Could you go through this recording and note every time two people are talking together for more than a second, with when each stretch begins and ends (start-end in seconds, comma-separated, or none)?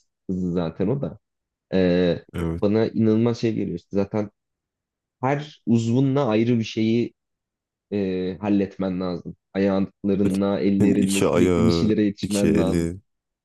10.8-12.9